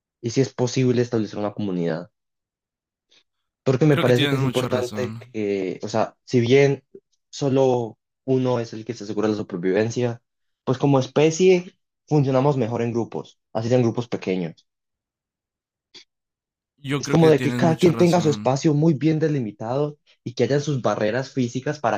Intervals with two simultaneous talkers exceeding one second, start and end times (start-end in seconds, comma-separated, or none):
3.9-5.3, 17.0-18.6